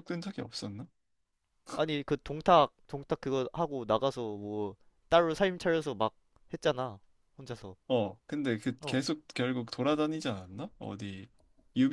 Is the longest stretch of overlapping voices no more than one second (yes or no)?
yes